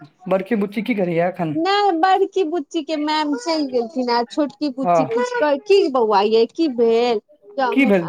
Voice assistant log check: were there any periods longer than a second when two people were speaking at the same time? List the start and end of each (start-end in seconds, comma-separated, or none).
none